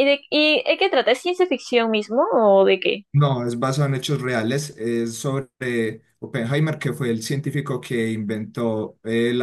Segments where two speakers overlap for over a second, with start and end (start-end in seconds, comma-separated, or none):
none